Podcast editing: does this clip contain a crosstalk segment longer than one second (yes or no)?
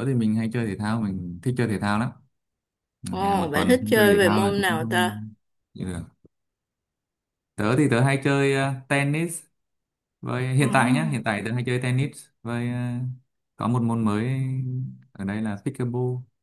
yes